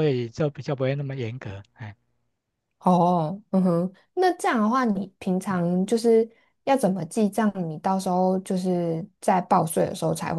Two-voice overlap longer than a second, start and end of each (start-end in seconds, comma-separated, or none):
none